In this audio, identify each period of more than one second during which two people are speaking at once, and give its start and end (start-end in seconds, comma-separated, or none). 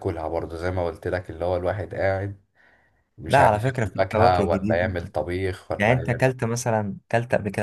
3.3-5.0